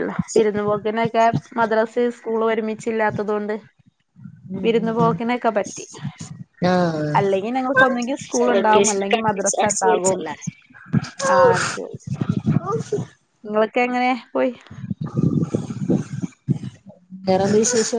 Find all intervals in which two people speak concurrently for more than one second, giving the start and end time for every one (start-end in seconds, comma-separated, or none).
8.6-10.2